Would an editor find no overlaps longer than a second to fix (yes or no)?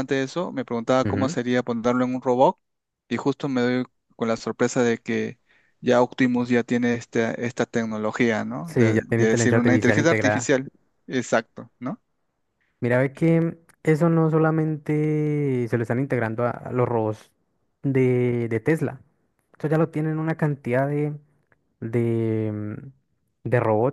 no